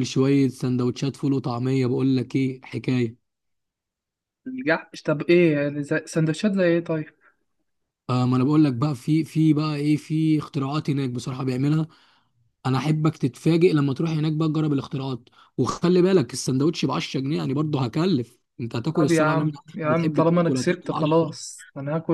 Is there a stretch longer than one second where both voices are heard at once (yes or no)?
yes